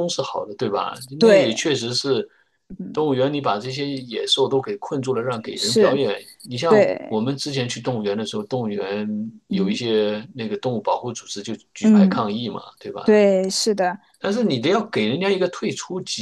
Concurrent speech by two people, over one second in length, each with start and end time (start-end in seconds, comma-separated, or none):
none